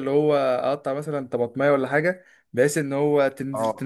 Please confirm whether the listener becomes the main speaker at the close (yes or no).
no